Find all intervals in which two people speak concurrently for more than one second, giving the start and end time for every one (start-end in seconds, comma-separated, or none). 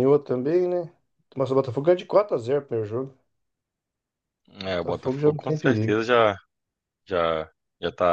4.6-6.0